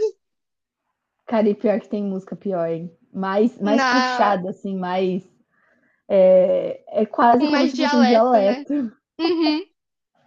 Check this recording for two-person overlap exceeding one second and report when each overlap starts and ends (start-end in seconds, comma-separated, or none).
7.4-8.6